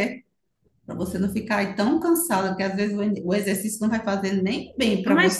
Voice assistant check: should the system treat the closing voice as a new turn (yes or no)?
yes